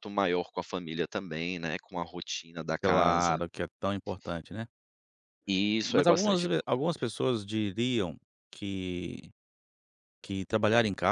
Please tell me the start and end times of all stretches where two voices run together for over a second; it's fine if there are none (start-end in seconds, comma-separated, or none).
5.8-7.1